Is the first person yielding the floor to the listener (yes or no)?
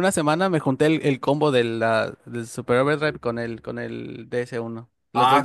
yes